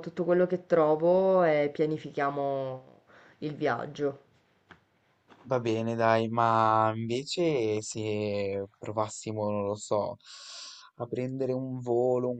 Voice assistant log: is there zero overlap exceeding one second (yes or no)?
yes